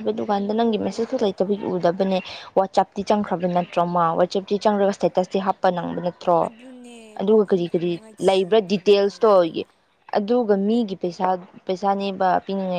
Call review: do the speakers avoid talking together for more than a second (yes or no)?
no